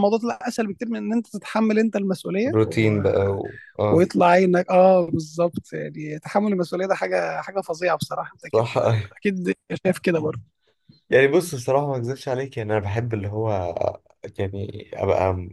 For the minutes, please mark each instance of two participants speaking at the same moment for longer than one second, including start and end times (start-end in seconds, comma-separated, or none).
none